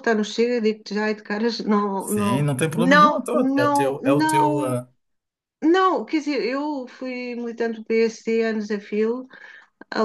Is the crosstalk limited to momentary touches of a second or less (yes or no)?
no